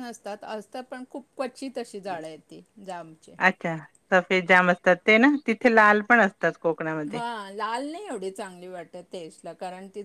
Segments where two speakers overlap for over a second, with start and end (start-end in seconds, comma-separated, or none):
none